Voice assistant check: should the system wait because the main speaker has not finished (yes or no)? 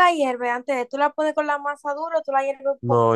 no